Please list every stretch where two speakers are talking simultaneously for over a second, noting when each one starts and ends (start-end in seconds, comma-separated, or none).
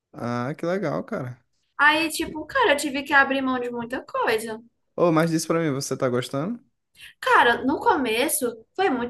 none